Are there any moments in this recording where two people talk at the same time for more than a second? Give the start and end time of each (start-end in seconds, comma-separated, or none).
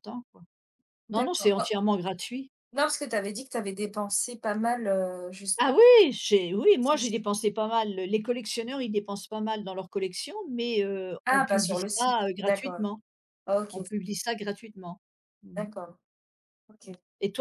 11.3-12.8